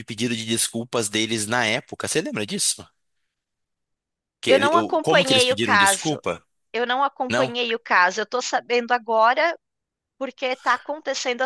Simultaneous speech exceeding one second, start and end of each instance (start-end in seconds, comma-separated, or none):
4.5-6.2